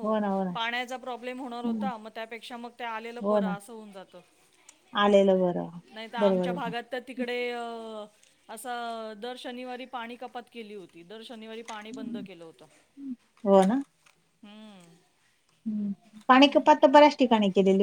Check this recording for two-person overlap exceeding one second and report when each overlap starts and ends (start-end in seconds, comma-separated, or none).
none